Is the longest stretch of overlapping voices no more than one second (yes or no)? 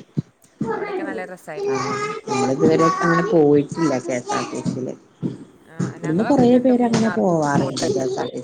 no